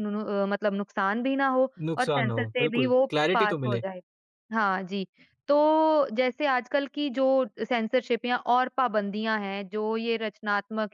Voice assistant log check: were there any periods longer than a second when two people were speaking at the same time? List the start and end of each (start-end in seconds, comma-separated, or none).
1.9-3.8